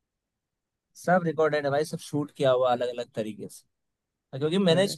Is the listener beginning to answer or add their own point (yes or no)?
no